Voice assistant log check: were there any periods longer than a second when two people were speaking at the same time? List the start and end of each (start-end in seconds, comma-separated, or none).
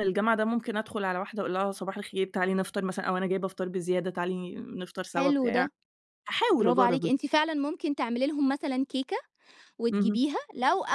none